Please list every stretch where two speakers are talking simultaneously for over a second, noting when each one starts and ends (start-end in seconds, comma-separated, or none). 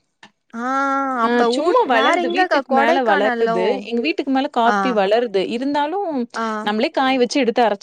1.3-3.6